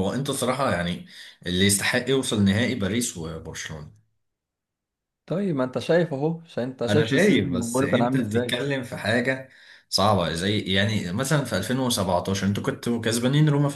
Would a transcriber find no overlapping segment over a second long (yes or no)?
no